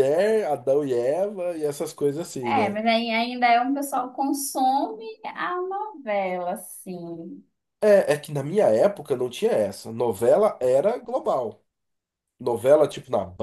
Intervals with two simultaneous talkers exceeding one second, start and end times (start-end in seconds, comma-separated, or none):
none